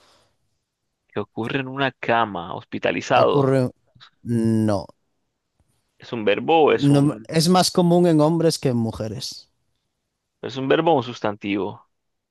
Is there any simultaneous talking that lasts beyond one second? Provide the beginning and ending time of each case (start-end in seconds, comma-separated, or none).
none